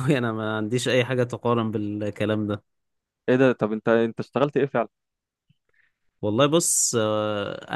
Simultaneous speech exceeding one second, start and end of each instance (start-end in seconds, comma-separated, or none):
none